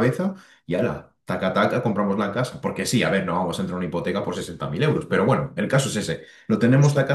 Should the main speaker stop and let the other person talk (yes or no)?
no